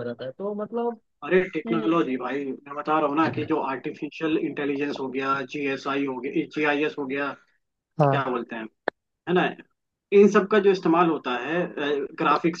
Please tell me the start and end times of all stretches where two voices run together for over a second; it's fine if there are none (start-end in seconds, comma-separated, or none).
none